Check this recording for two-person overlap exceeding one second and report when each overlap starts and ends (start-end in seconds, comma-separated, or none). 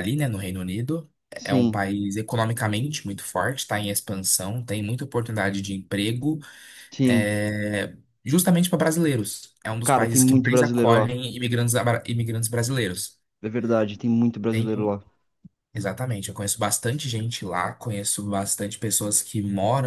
9.8-11.1